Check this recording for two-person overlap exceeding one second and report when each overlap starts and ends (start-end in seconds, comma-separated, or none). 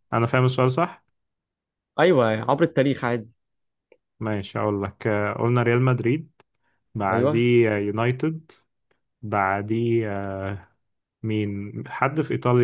none